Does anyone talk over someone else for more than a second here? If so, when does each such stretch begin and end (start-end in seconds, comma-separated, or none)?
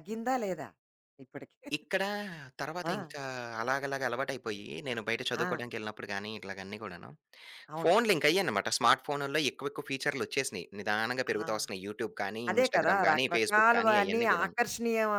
12.5-14.5